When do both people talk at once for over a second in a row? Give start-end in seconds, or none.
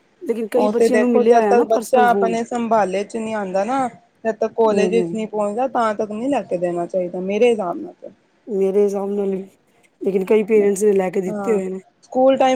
0.6-2.4